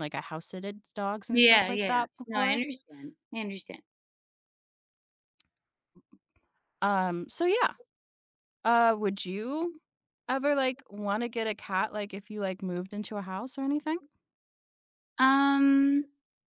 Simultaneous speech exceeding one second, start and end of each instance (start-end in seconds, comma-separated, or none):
1.3-2.6